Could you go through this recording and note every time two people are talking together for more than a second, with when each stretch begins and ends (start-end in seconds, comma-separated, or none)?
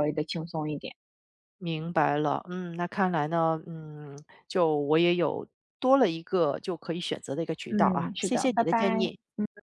7.7-9.1